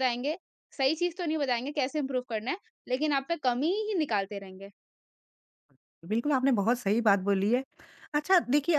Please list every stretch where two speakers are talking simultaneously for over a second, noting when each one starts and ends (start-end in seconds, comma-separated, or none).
none